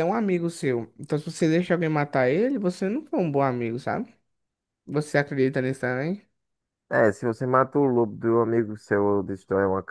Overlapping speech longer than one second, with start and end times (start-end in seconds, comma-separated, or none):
none